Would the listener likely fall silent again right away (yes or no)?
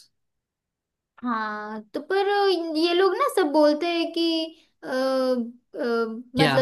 yes